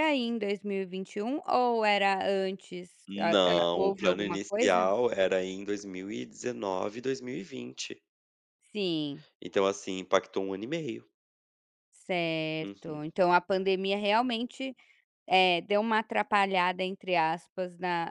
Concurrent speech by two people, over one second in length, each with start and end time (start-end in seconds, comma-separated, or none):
3.1-4.9